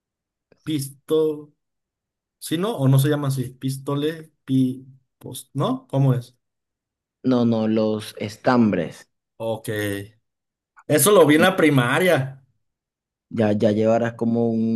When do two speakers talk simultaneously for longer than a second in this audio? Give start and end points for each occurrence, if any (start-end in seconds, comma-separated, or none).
none